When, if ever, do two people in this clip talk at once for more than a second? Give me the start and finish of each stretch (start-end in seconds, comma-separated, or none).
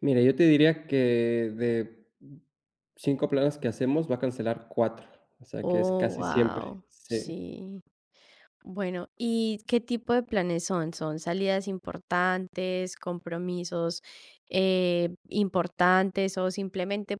5.6-7.3